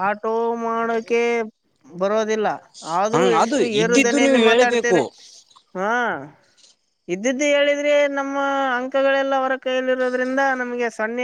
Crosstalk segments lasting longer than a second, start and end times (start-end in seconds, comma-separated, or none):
3.1-5.0